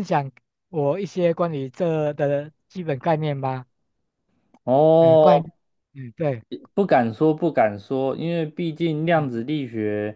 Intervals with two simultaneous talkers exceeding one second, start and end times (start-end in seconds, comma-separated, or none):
none